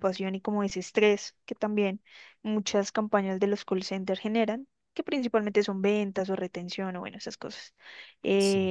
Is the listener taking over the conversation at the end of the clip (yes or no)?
no